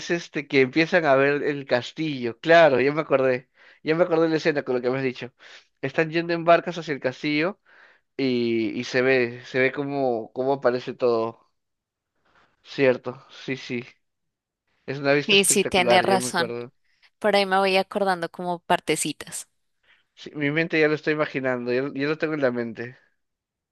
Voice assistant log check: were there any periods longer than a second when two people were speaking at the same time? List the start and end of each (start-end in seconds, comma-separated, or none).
15.3-16.5